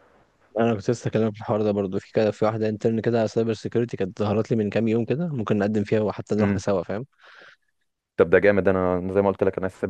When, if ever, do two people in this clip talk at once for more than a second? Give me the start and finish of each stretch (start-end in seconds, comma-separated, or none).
none